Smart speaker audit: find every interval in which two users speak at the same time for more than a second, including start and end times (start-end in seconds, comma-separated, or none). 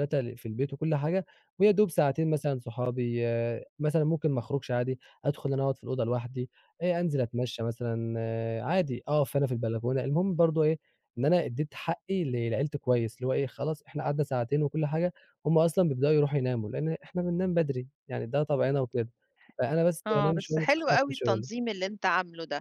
20.1-21.5